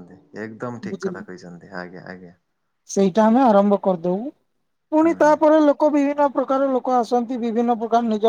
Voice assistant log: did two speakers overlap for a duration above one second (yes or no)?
no